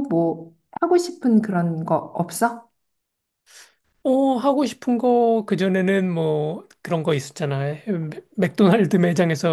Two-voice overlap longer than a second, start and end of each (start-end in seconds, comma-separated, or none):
none